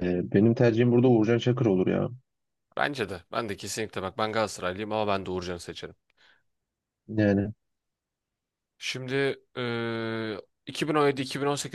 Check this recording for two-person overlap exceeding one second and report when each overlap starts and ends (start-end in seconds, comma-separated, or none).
none